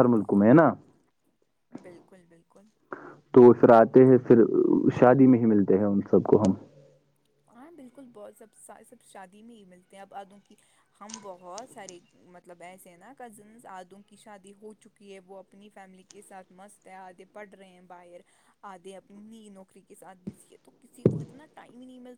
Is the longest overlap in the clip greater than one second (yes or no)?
no